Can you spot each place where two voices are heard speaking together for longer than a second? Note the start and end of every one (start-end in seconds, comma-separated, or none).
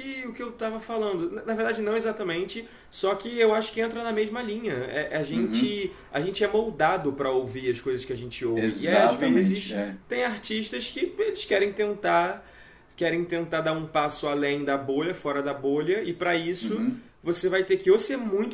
8.6-10.0